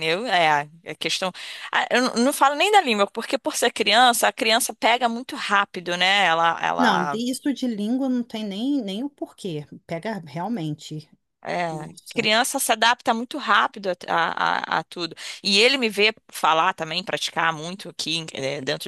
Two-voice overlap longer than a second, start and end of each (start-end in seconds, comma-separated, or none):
none